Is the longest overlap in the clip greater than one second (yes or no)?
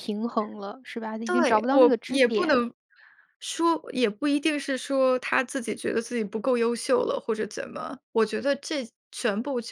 yes